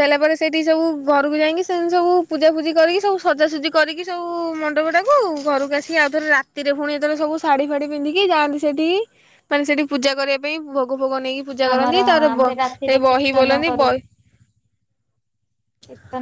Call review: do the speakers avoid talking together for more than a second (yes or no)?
no